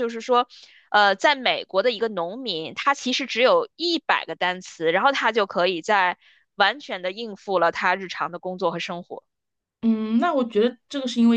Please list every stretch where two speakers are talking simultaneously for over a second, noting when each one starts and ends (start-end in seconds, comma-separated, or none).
none